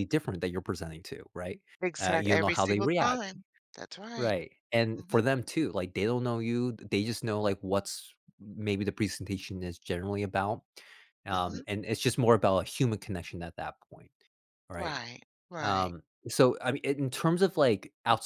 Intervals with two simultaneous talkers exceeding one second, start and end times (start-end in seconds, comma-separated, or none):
2.0-3.3